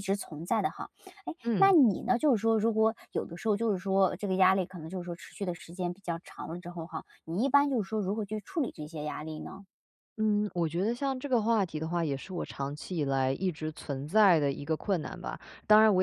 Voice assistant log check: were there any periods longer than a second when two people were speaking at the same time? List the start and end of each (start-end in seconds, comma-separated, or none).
none